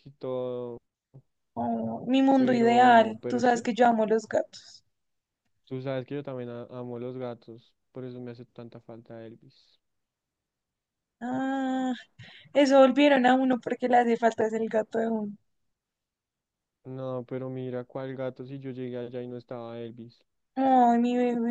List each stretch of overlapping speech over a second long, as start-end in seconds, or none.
2.4-3.6